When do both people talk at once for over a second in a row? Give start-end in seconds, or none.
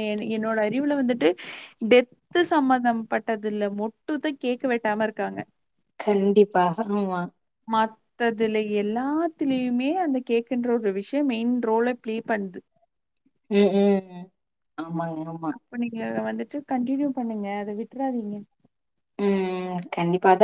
none